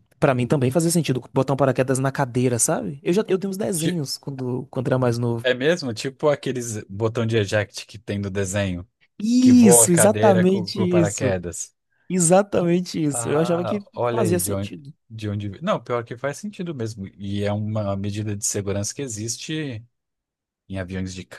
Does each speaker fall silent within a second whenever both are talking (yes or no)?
no